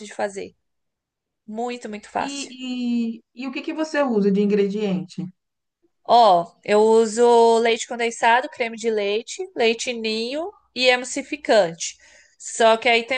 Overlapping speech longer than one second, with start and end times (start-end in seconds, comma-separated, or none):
none